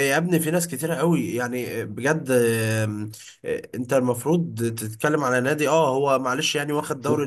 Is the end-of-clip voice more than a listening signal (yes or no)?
no